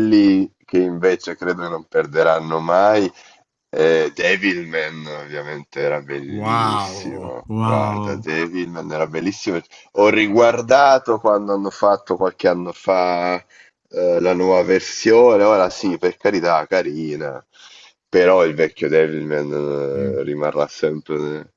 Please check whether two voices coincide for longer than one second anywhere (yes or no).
yes